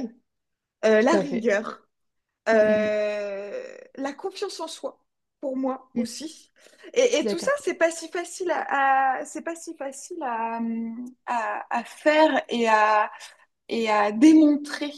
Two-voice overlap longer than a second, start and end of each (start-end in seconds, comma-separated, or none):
none